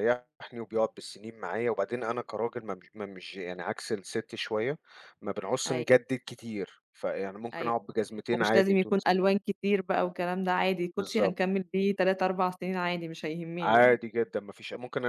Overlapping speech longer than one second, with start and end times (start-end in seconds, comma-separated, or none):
7.5-9.3